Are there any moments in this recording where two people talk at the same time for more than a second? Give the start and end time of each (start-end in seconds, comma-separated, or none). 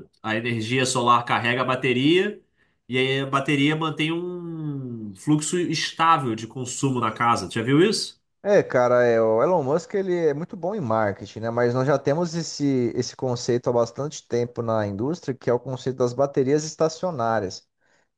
none